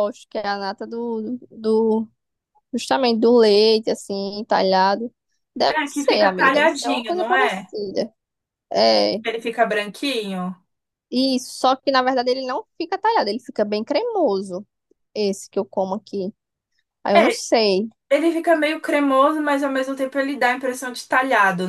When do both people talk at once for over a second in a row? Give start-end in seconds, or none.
5.7-7.7